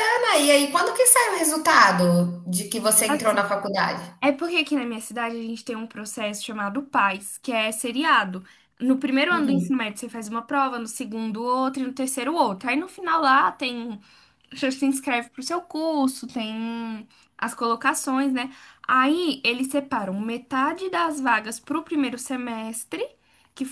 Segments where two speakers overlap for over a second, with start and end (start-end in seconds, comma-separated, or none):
none